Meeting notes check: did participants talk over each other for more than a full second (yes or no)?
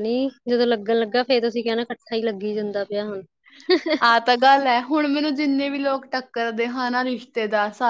no